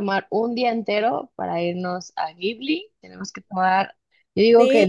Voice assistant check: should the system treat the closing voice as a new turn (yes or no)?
no